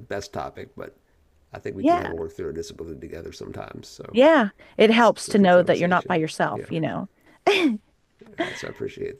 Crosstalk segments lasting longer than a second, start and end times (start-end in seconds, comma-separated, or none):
4.9-6.7